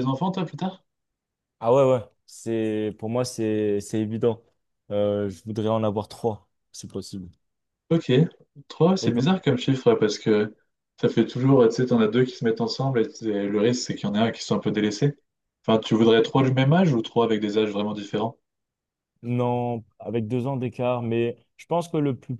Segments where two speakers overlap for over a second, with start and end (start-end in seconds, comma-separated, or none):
none